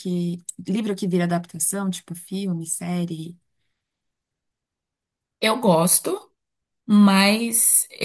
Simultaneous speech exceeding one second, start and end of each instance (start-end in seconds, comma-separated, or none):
none